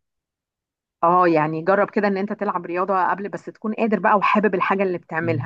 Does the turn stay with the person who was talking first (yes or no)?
no